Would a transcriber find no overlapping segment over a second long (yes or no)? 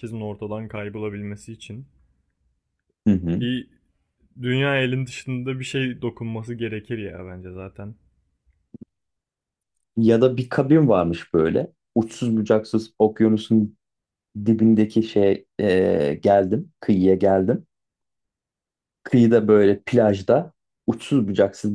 yes